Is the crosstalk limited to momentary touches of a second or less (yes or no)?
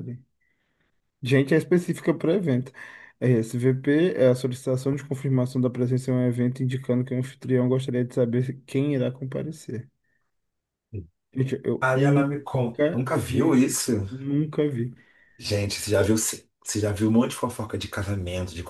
no